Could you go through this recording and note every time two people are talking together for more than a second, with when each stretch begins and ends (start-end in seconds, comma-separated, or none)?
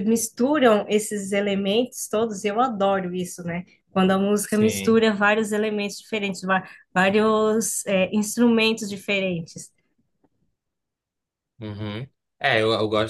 none